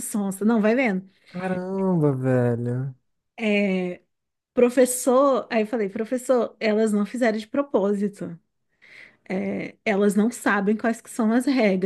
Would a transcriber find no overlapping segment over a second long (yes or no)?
yes